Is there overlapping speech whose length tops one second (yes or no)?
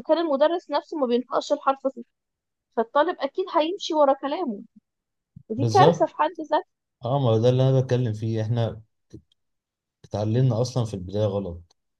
no